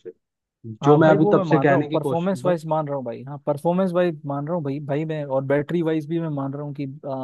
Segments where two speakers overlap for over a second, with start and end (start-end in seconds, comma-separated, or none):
0.8-2.3